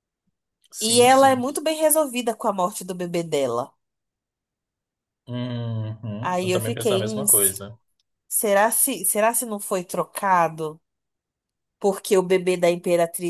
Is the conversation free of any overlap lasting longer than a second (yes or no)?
no